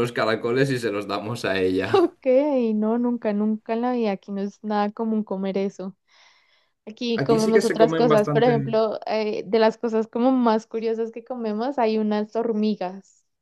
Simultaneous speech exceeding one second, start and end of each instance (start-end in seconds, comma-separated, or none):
7.2-8.5